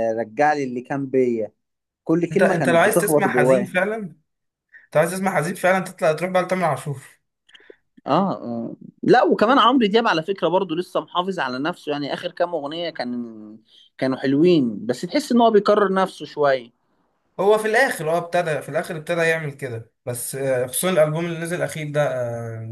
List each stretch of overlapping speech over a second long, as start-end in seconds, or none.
2.3-3.8